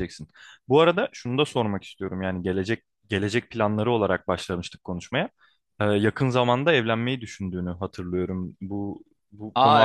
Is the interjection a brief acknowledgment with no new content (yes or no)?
no